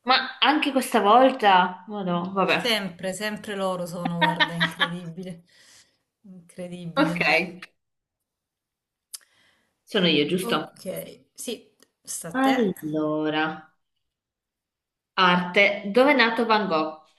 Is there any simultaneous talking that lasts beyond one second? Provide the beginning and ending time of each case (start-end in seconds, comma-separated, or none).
none